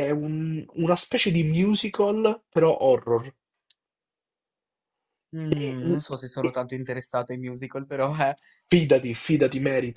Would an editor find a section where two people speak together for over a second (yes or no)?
no